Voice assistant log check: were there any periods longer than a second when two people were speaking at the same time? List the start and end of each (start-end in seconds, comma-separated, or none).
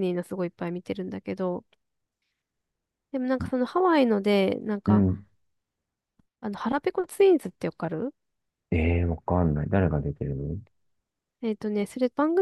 none